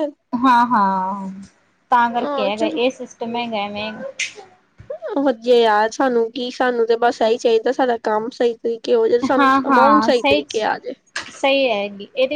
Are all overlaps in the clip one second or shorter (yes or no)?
no